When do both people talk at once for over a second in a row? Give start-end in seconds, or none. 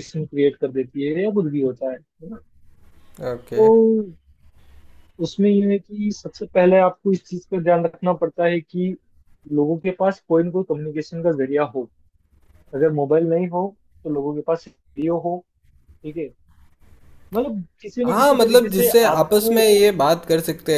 18.1-19.6